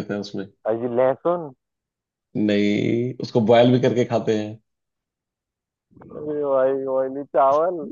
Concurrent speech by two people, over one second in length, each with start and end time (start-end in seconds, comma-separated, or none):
none